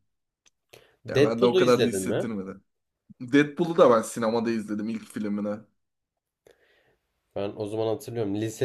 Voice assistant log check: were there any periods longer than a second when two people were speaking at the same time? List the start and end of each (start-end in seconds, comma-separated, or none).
1.1-2.3